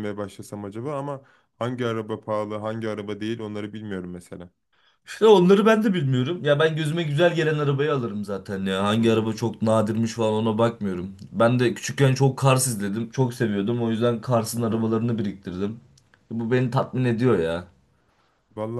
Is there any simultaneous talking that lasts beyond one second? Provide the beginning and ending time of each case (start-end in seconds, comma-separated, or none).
none